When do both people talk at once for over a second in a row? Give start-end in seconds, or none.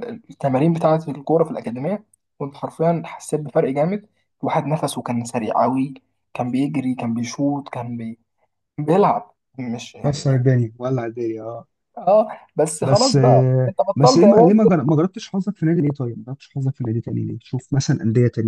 12.8-14.7